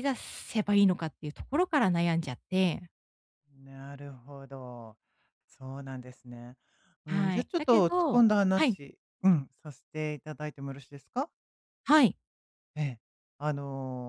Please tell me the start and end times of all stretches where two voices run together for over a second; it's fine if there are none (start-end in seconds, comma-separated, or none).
7.1-8.8